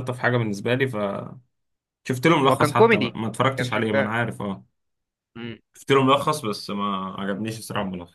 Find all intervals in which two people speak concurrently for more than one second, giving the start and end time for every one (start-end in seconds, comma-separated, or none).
2.5-4.1